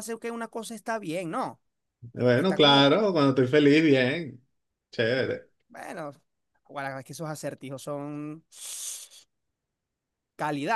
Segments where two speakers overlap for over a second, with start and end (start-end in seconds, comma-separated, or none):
none